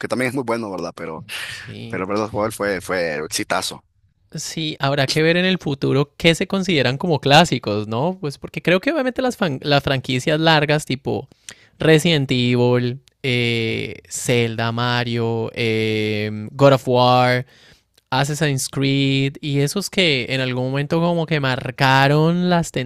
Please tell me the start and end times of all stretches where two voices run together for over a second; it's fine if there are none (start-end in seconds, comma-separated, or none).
none